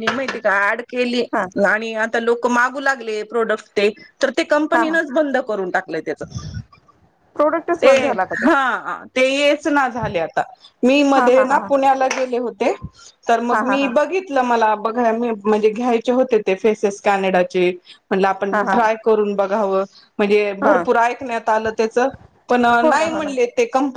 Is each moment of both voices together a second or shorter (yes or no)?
yes